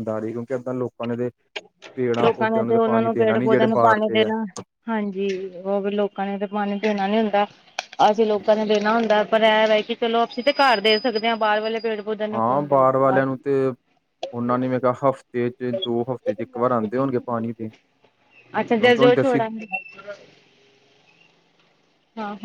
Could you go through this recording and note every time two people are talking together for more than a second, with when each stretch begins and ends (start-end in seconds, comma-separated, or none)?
2.2-4.3